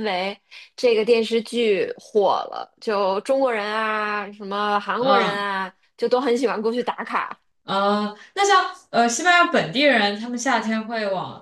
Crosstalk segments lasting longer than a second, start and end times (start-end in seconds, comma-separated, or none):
none